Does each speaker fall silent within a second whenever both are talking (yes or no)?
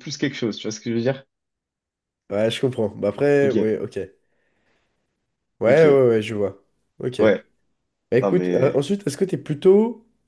yes